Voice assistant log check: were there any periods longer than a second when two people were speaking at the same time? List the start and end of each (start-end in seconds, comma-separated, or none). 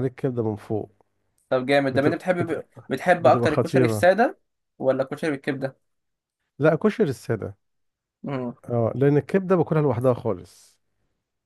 1.9-4.1